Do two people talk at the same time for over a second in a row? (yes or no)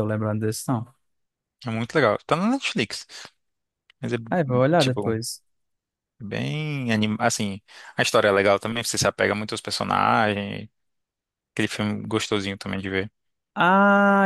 no